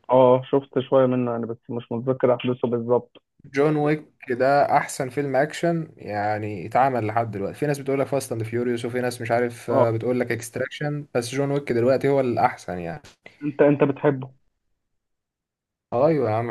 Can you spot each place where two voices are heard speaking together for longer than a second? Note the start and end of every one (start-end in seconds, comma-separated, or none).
none